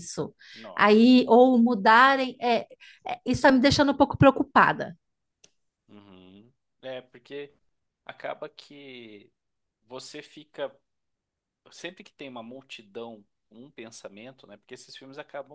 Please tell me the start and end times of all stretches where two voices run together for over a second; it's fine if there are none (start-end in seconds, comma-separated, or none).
none